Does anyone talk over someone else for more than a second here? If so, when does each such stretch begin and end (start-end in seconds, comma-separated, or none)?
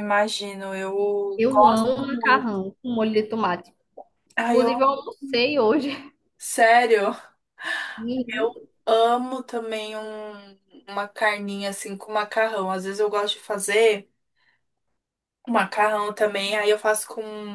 1.4-2.6